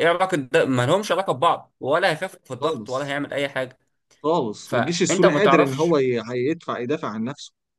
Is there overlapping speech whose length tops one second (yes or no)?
yes